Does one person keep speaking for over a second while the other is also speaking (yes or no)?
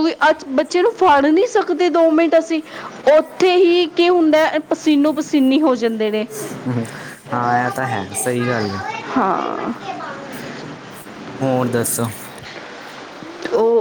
no